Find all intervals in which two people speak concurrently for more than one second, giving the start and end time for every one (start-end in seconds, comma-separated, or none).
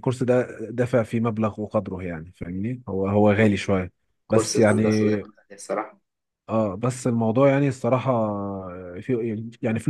none